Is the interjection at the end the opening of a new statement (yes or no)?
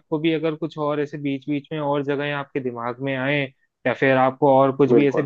no